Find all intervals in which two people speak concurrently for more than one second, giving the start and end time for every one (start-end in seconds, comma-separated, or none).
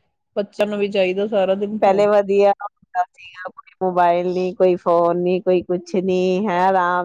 none